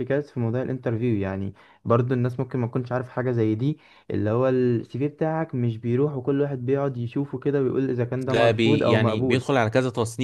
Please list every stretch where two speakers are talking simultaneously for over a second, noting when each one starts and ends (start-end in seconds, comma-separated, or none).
8.2-9.5